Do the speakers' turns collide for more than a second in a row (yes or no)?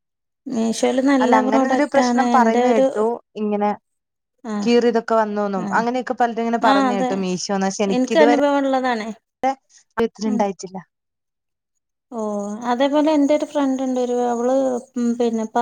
yes